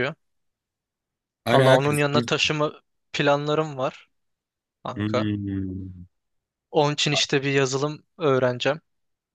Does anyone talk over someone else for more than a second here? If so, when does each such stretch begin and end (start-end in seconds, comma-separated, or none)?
none